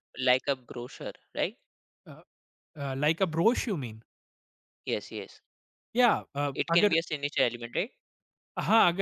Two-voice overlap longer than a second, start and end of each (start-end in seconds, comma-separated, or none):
none